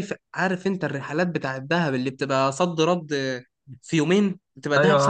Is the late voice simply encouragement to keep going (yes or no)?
no